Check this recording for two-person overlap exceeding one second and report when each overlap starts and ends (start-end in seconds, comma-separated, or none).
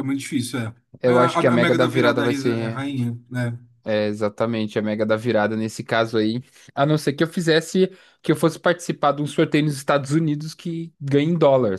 1.0-2.8